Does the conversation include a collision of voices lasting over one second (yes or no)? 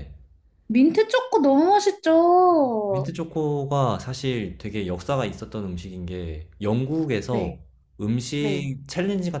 no